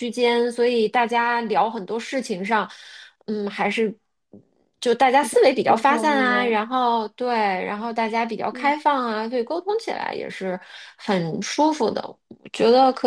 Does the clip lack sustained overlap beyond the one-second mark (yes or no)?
no